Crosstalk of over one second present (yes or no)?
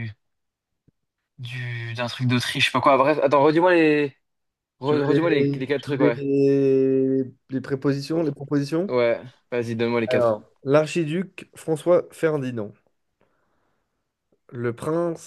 yes